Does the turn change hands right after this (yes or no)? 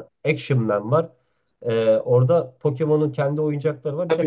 yes